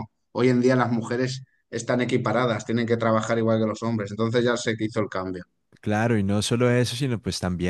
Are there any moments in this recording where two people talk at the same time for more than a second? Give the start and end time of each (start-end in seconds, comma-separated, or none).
none